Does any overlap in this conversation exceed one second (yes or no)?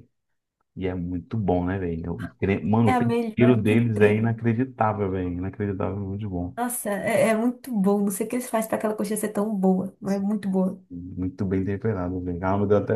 yes